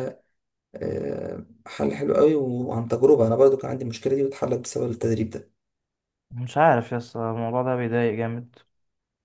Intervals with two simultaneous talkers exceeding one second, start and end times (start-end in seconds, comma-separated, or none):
none